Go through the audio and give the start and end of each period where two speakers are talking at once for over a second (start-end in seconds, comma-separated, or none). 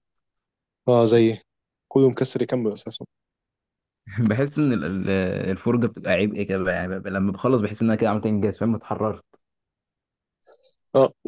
none